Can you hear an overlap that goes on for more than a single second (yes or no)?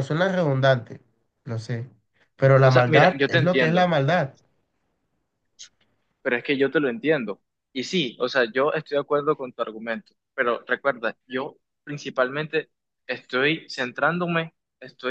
yes